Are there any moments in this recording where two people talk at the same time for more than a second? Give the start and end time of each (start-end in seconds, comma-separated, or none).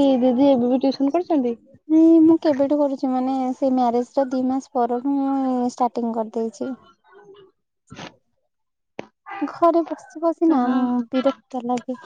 none